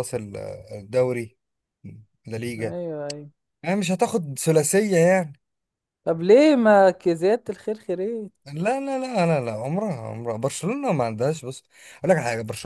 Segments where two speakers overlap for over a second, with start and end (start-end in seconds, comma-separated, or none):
none